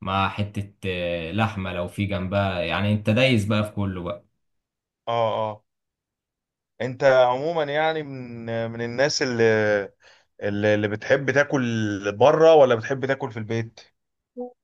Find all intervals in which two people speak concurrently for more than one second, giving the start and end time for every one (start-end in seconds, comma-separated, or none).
none